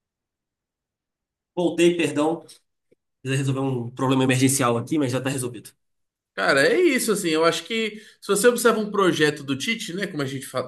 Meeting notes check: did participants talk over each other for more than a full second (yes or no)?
no